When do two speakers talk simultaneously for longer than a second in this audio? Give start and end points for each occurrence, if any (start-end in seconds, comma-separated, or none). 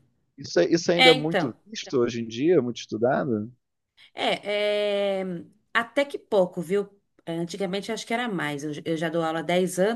none